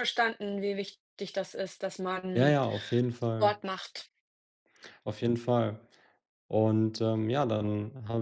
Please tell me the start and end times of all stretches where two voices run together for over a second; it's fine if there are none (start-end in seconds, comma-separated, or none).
none